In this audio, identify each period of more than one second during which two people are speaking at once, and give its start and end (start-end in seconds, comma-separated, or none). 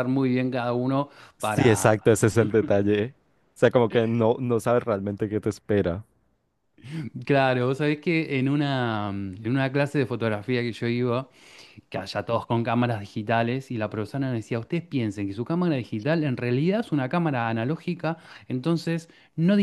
none